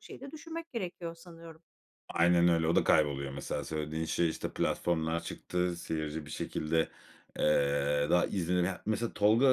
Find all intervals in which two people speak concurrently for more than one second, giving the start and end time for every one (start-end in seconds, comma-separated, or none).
none